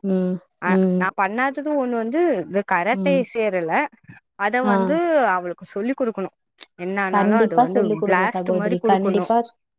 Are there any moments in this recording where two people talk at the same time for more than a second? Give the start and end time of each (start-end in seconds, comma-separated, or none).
7.1-9.3